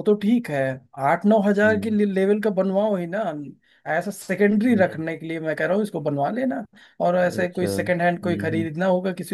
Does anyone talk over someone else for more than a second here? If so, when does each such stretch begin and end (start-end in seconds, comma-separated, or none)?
7.3-8.7